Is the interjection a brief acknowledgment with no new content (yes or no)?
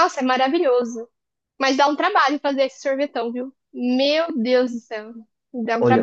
no